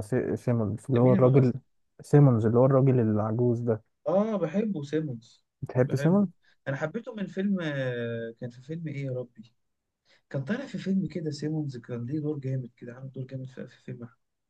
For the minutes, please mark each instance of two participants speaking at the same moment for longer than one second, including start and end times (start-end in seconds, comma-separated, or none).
none